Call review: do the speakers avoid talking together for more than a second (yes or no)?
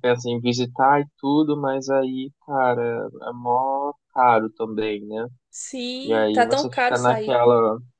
no